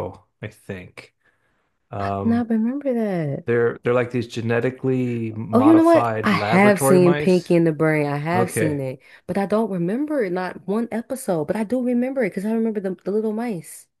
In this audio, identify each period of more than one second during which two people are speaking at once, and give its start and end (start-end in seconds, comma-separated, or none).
5.5-7.5